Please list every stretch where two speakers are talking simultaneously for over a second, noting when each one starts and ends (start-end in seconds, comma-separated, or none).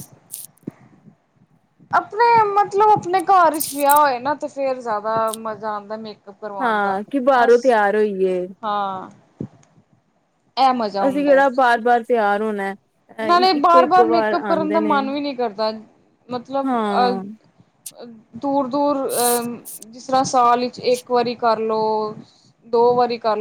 13.3-15.0